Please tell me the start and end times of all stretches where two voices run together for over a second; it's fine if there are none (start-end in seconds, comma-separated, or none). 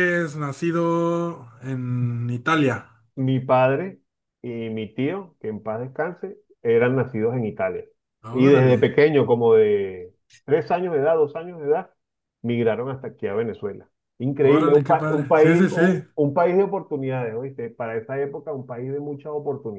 14.4-16.0